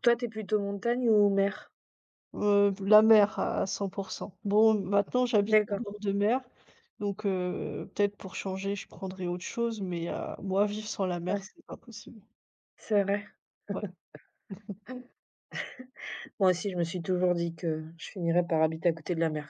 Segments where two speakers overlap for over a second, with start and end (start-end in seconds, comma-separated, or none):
none